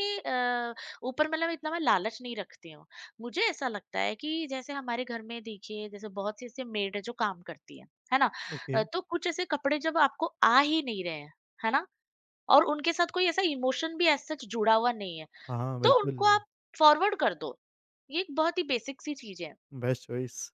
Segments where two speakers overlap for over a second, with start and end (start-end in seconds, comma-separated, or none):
none